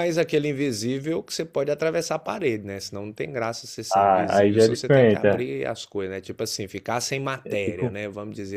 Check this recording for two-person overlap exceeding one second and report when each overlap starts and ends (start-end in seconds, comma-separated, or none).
3.9-5.4